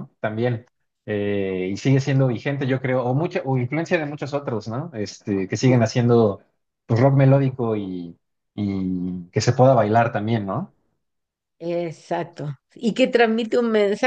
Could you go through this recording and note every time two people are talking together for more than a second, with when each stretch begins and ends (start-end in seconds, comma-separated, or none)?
none